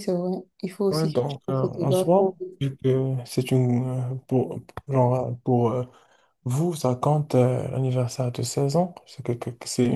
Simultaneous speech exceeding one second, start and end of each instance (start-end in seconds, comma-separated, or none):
0.9-2.4